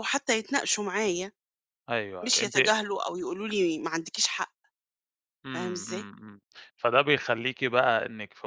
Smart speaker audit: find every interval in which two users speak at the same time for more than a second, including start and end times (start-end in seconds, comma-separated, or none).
none